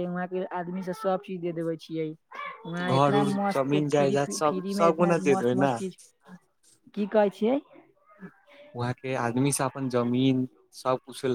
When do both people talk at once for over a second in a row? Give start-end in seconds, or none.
2.9-5.7